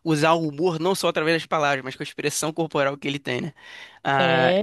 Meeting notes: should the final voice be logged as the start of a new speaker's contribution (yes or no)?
no